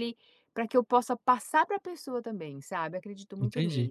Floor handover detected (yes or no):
yes